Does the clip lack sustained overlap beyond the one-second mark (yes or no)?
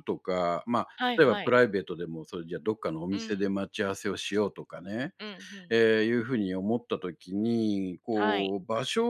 yes